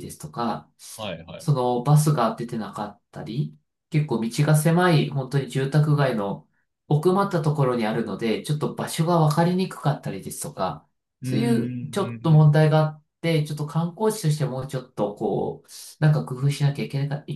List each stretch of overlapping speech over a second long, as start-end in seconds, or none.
11.2-12.5